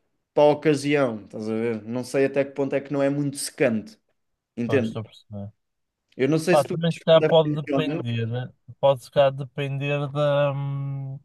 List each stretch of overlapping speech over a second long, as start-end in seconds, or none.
6.5-8.1